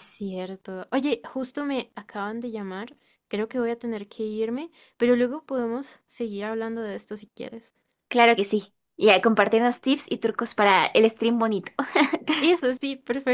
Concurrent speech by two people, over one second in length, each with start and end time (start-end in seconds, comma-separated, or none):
none